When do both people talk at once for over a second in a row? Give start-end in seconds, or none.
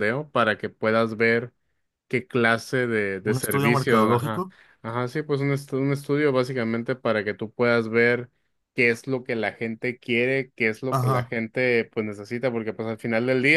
3.2-4.4